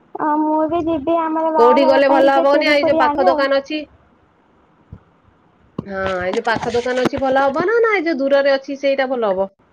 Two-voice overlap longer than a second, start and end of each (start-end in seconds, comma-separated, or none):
1.6-3.3